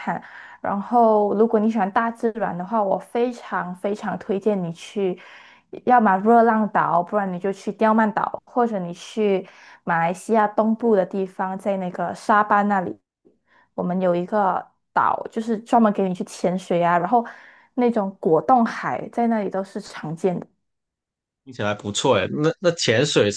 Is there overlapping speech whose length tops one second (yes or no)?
no